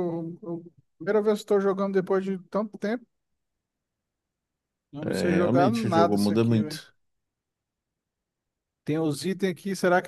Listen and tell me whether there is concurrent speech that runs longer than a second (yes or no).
yes